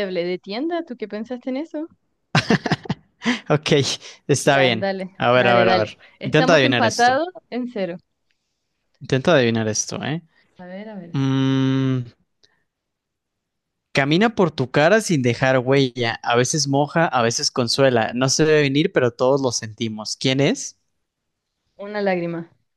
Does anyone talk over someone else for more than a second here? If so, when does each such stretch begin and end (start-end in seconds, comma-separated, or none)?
4.4-7.2